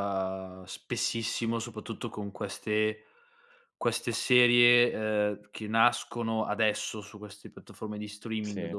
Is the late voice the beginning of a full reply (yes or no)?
no